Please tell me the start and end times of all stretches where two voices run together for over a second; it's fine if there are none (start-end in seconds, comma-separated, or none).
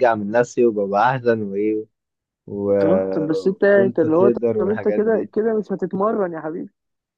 3.7-5.3